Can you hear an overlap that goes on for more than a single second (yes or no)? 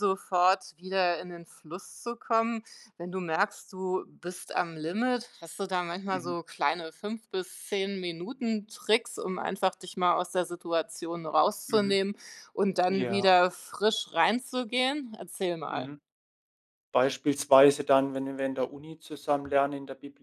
no